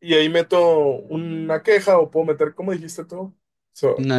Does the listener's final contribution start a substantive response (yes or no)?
no